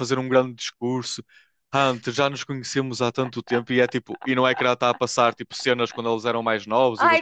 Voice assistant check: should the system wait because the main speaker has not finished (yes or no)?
no